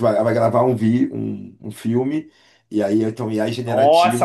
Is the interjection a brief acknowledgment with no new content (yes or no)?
no